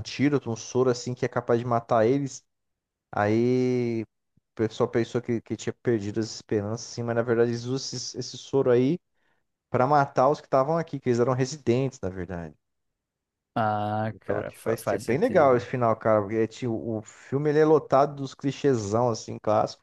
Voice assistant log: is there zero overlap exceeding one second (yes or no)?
no